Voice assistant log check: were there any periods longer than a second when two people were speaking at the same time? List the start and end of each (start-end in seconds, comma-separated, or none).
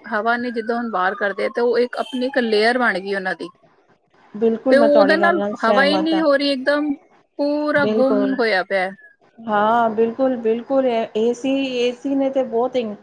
4.7-6.2